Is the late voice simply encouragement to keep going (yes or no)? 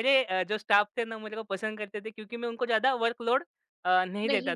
yes